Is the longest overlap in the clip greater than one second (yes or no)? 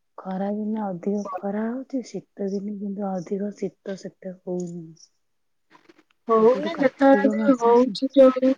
yes